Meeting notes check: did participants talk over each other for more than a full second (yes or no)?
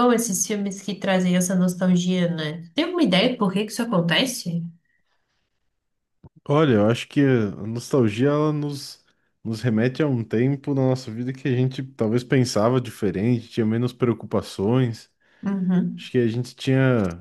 no